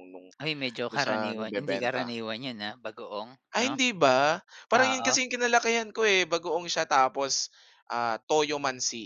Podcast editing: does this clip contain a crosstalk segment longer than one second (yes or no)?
yes